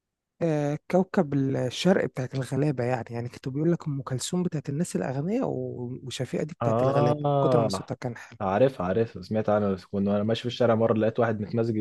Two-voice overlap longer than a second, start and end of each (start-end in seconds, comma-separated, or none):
6.6-7.9